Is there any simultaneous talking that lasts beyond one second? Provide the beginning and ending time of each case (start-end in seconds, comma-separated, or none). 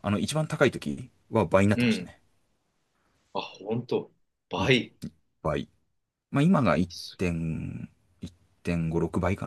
none